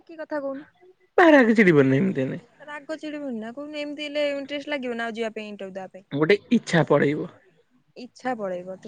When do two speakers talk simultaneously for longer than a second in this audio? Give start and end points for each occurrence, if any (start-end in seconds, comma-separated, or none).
none